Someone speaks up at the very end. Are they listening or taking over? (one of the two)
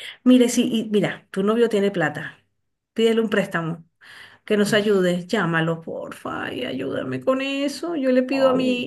listening